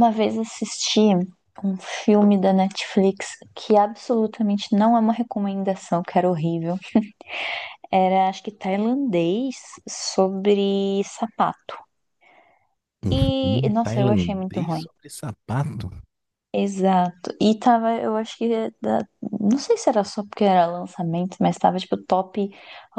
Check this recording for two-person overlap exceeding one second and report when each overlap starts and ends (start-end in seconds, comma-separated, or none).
13.1-14.9